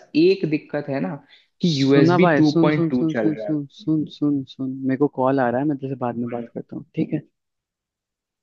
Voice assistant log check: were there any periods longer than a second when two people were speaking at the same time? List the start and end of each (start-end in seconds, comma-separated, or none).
1.7-3.5